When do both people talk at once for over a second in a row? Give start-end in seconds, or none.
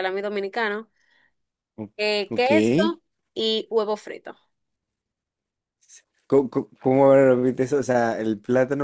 none